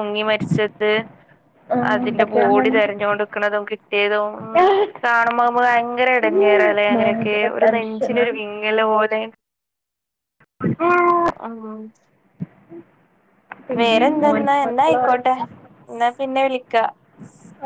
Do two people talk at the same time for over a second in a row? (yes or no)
yes